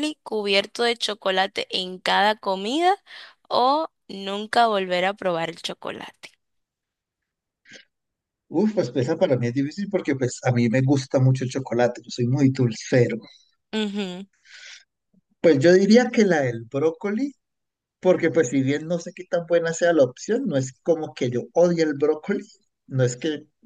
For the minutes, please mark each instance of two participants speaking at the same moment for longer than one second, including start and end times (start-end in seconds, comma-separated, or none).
none